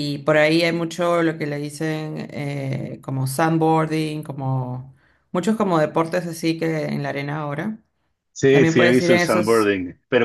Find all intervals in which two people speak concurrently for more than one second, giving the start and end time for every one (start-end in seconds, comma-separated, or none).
8.5-9.7